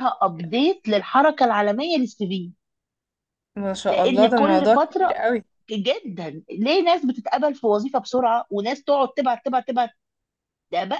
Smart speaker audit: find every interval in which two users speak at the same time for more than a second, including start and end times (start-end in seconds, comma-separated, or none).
3.9-5.2